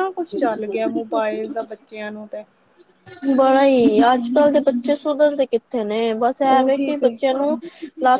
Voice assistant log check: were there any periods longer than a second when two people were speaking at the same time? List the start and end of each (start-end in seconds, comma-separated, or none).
none